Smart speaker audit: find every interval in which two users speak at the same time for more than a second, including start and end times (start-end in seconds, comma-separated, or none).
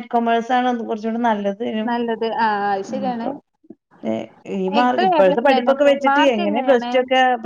4.8-6.9